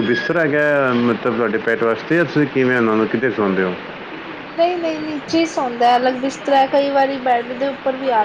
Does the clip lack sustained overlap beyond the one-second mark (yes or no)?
yes